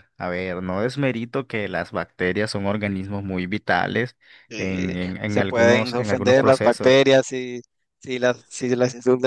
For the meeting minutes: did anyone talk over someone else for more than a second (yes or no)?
yes